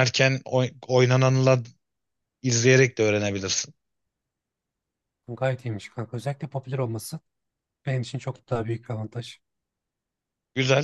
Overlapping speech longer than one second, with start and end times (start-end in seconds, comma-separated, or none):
none